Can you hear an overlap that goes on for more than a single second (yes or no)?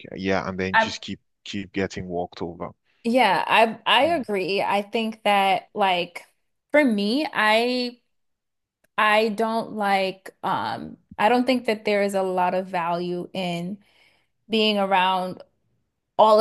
no